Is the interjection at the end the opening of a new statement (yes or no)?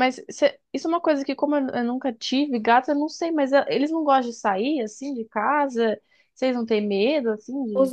yes